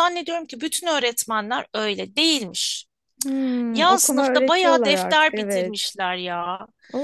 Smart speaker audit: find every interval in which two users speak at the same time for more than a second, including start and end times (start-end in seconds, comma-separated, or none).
3.7-5.9